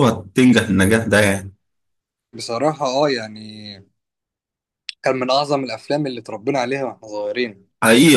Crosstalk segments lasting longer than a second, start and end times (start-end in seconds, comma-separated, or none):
none